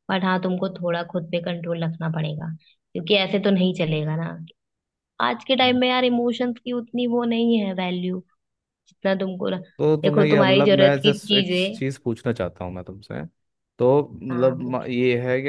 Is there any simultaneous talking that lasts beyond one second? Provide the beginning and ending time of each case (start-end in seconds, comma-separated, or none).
10.0-11.8